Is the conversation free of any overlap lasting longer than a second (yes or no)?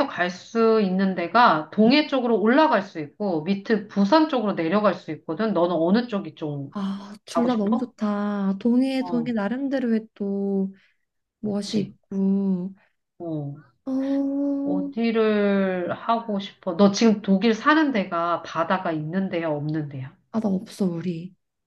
yes